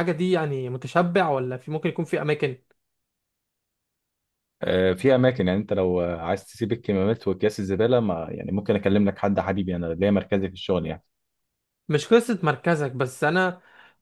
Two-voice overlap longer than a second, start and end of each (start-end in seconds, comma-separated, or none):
none